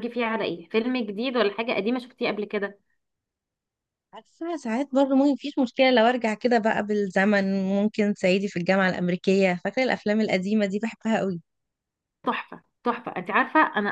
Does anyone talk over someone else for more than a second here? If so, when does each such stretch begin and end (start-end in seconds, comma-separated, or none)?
none